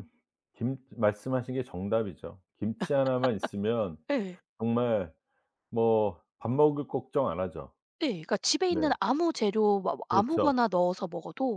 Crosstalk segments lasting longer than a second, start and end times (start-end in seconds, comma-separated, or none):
none